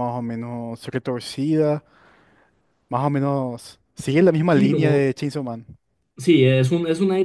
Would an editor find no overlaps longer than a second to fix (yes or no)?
yes